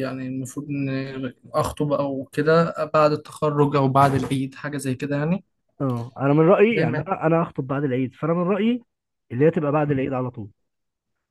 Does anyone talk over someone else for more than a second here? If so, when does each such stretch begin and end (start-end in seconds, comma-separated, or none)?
none